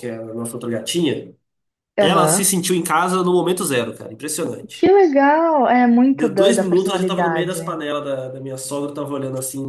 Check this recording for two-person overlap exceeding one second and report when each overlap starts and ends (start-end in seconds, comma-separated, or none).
6.1-7.6